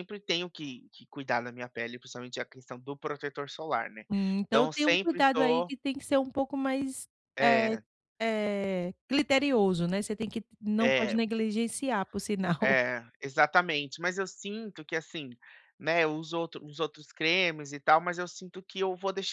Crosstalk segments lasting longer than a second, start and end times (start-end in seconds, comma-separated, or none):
4.5-5.7